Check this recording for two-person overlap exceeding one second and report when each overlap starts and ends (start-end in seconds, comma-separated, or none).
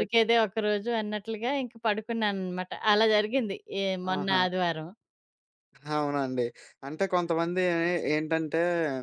none